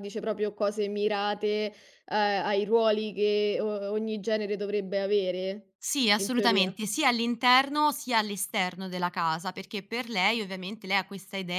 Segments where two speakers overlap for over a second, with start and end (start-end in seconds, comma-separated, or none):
none